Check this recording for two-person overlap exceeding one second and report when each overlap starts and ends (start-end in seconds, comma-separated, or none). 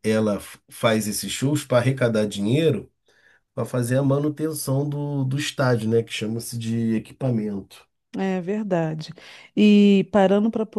none